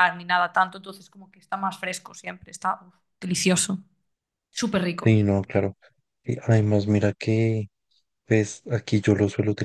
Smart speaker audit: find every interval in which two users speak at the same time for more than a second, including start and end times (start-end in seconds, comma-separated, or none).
none